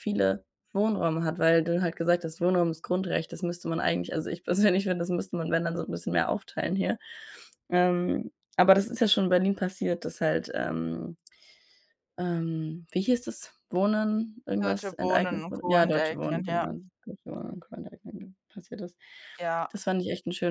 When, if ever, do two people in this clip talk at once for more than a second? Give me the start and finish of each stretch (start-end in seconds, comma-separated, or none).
14.6-16.7